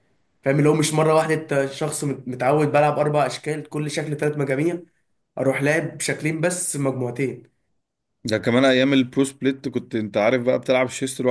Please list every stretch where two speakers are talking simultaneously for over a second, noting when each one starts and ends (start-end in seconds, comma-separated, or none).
none